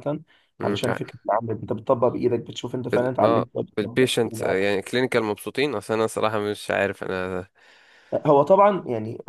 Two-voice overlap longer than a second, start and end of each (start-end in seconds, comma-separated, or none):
2.9-4.6